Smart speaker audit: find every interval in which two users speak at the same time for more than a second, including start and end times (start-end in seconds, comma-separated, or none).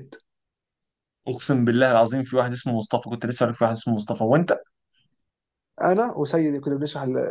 none